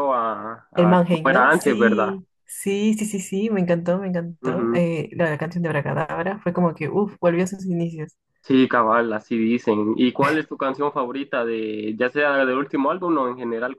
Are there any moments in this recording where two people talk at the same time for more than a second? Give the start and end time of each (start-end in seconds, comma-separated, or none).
0.8-2.2